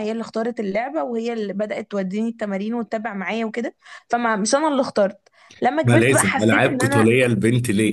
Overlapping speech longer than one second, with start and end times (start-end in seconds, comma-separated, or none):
5.8-7.1